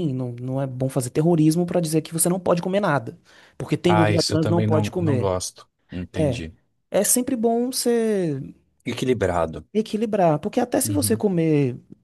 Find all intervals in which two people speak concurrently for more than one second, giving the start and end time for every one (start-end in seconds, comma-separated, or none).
3.8-5.3